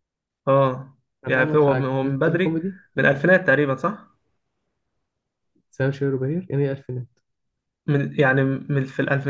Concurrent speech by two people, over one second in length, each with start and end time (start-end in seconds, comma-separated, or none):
1.2-2.8